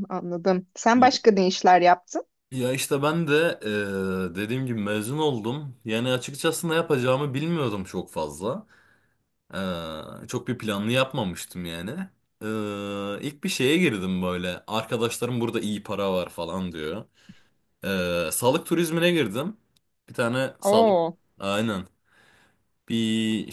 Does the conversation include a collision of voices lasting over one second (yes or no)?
no